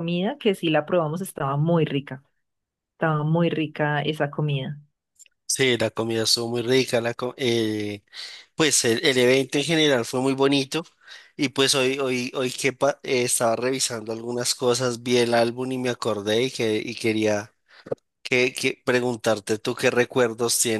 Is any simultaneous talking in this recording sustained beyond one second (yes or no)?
no